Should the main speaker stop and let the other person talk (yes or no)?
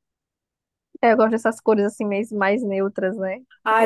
yes